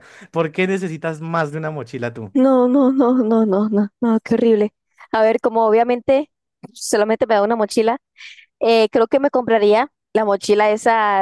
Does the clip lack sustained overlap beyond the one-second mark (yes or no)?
yes